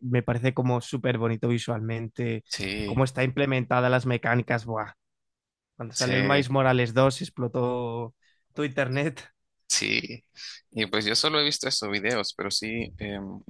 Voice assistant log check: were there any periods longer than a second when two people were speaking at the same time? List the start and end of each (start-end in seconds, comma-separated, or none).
none